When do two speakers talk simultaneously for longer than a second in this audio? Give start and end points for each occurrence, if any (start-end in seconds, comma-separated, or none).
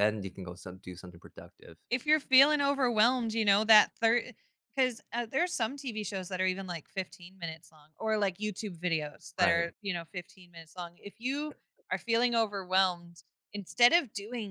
none